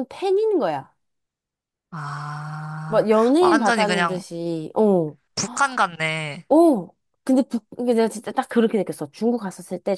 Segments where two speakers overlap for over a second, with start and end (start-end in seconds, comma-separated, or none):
2.9-4.2